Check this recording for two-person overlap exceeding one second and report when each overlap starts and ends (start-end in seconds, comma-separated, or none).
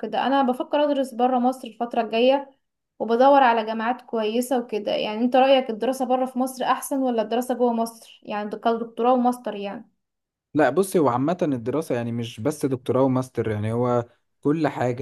none